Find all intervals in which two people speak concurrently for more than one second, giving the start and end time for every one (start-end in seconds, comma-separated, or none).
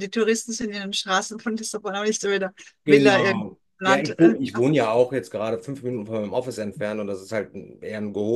2.8-4.6